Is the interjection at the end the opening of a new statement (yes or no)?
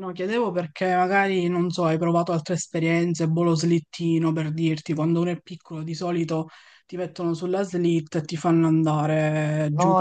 yes